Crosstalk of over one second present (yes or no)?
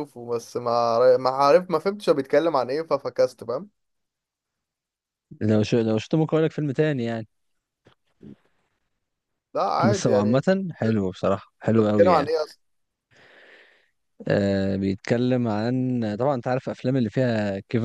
no